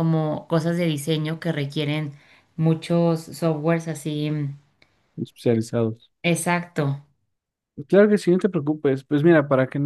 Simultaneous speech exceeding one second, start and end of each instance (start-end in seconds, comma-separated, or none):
none